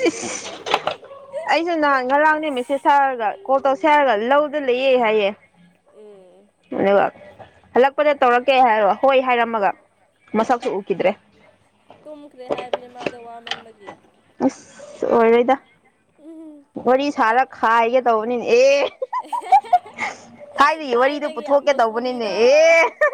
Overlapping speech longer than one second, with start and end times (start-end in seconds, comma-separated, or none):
20.9-22.3